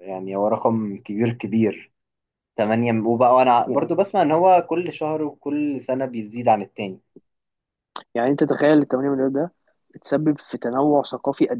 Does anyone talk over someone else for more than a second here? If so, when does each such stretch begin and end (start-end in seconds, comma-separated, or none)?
none